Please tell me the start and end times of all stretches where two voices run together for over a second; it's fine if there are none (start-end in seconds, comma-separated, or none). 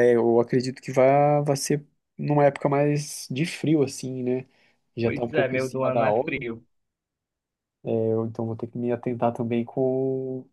5.0-6.4